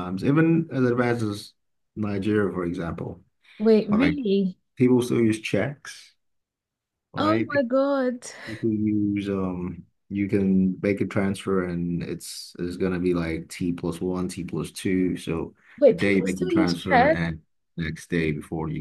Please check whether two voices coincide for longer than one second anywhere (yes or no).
yes